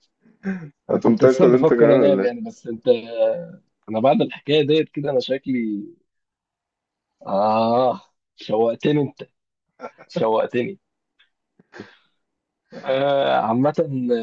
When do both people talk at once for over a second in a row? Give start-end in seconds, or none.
0.9-2.5